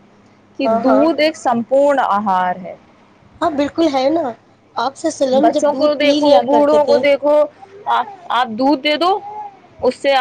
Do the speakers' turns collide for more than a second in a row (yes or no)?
yes